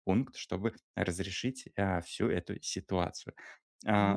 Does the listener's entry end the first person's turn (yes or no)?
no